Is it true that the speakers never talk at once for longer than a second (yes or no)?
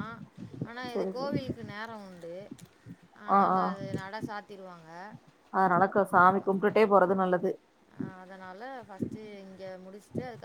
yes